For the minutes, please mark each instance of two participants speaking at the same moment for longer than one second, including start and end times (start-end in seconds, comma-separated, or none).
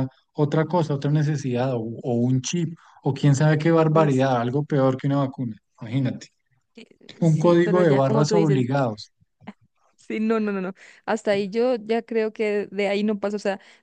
7.2-8.7